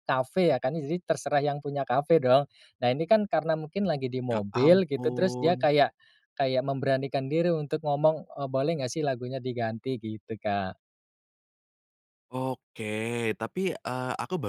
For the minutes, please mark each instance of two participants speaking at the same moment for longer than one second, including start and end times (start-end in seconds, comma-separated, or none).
4.3-5.7